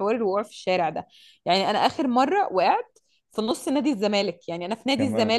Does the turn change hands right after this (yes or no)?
no